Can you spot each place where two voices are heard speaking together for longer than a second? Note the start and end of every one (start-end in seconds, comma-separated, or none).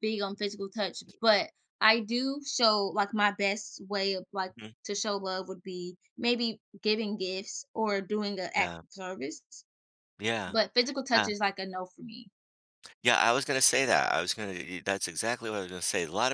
none